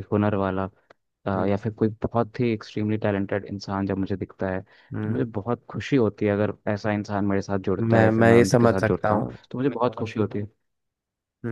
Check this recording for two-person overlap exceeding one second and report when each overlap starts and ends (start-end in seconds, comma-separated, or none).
7.8-9.4